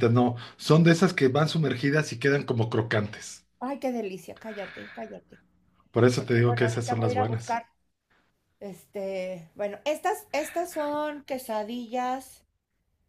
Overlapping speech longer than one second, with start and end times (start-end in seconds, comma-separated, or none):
6.2-7.6